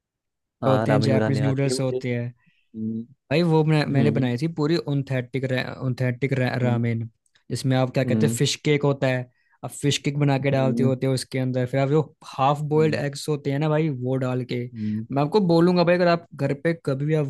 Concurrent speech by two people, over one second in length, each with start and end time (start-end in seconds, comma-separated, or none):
0.6-2.0